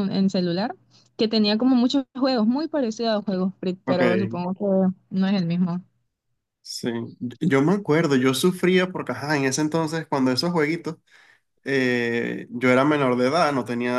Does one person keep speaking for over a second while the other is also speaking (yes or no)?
no